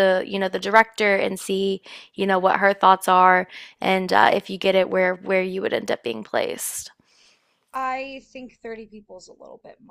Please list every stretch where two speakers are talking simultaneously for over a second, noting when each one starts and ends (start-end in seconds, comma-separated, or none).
none